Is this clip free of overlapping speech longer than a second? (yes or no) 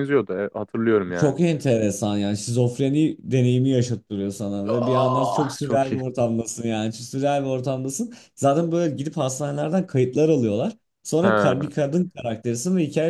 no